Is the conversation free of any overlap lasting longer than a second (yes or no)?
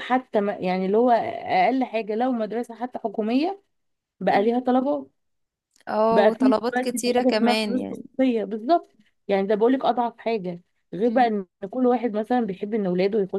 no